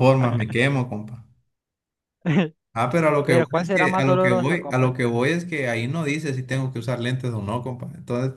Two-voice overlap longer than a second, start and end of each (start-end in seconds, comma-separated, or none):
3.2-5.0